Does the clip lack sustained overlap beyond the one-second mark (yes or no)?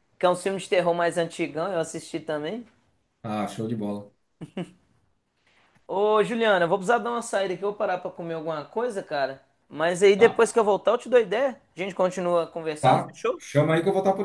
yes